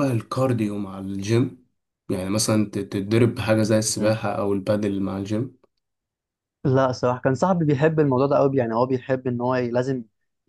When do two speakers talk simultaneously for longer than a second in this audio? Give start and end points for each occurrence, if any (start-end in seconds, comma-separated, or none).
none